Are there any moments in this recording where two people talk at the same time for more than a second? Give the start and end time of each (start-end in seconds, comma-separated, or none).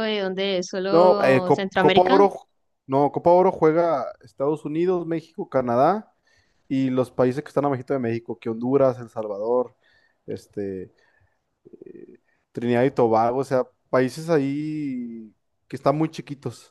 0.9-2.3